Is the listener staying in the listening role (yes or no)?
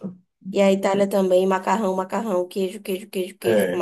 no